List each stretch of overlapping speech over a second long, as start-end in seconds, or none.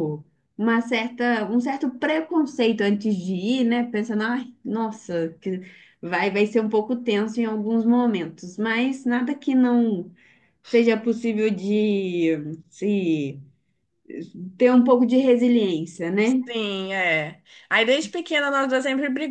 none